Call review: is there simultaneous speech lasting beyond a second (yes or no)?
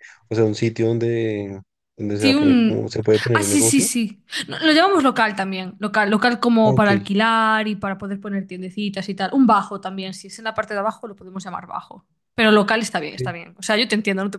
yes